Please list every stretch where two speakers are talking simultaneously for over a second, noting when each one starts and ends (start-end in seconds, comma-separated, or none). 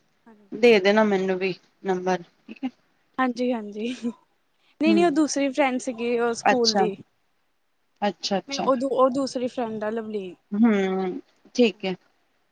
none